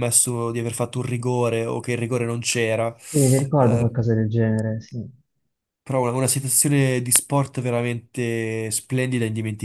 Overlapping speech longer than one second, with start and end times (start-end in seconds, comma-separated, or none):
none